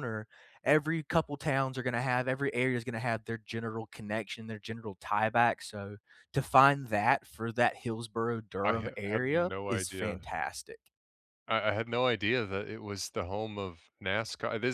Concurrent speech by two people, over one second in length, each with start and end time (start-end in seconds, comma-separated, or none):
8.6-10.2